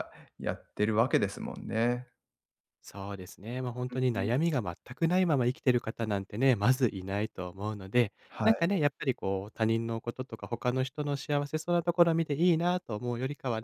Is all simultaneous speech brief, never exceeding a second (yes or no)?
yes